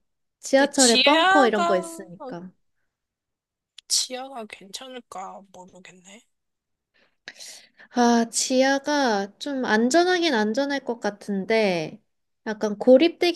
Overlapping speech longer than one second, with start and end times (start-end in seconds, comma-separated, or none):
0.6-1.8